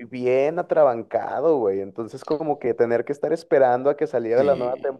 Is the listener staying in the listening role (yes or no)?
yes